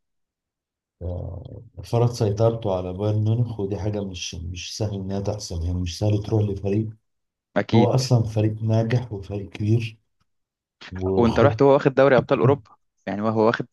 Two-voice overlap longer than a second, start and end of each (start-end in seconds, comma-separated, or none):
none